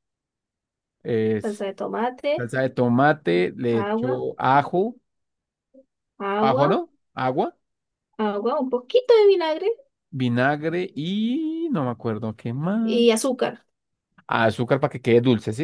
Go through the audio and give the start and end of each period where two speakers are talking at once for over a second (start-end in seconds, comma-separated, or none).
none